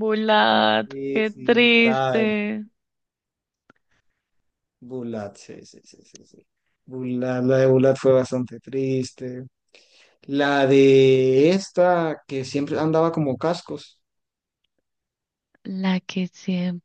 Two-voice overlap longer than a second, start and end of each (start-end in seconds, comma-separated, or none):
0.8-2.4